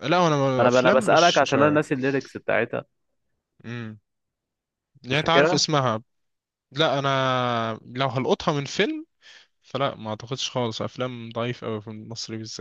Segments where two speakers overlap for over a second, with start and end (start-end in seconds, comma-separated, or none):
0.6-1.8